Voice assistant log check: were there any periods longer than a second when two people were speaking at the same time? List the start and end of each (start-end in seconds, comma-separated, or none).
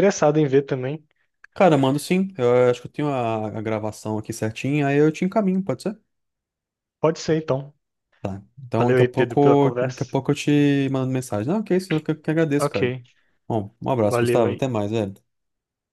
8.8-10.0